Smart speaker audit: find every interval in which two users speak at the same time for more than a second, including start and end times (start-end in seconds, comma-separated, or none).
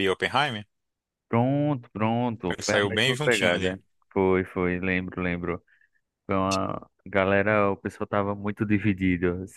2.5-3.8